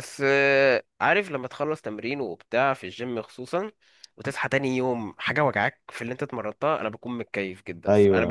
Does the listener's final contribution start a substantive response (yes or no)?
yes